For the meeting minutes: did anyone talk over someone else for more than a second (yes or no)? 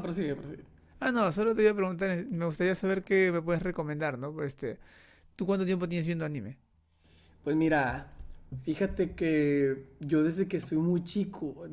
no